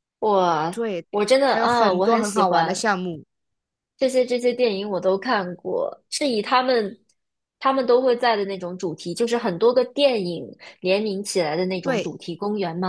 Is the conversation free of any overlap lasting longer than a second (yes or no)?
no